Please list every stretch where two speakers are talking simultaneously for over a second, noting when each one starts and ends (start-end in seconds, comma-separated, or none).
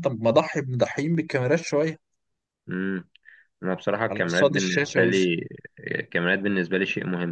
4.1-5.3